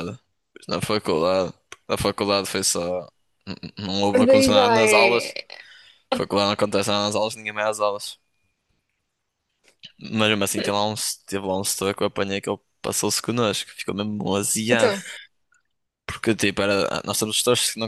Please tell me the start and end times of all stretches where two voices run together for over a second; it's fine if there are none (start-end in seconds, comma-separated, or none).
4.1-5.3